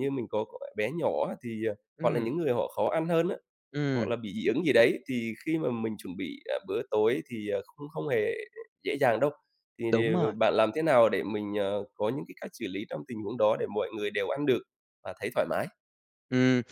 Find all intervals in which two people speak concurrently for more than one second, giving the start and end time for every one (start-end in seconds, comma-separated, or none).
none